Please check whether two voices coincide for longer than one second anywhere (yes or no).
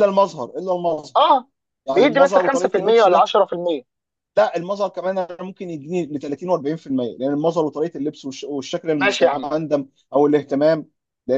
yes